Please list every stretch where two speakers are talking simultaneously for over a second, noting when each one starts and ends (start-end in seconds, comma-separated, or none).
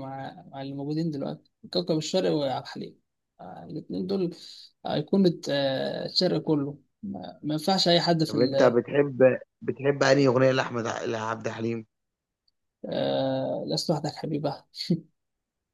none